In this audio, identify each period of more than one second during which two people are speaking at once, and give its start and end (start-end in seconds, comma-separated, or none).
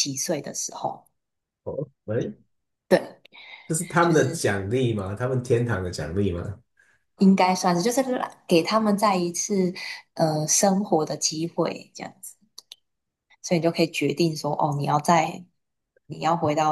none